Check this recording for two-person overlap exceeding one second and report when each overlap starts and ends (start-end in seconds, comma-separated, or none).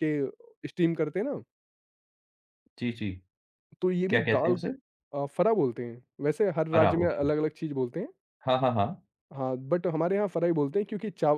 none